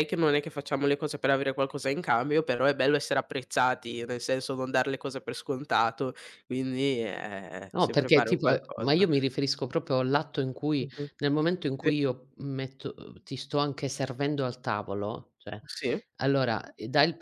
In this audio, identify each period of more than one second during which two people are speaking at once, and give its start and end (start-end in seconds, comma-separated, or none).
7.7-9.1